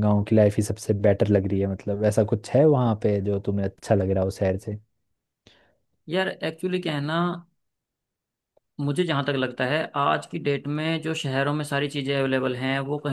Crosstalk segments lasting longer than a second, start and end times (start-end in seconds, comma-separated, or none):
none